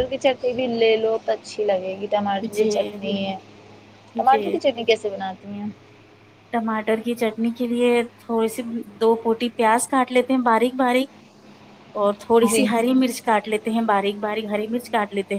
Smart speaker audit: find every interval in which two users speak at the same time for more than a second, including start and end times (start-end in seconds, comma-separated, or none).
none